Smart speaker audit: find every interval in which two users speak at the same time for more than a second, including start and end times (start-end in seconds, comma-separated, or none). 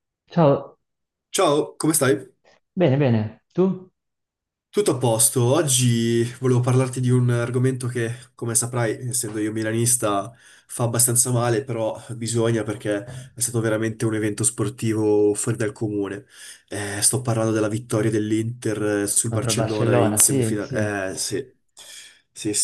19.2-21.0